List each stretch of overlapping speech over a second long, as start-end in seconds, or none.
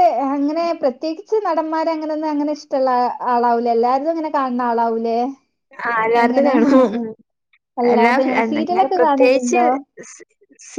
7.9-9.6